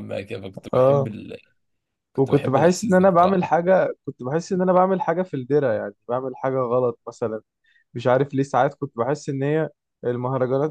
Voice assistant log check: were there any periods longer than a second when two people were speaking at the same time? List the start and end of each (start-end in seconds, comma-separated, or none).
2.2-3.4